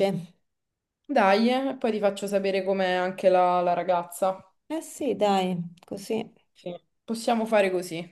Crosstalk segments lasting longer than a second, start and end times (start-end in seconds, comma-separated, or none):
none